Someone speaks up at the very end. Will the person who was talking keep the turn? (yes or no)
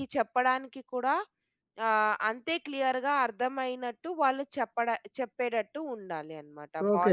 no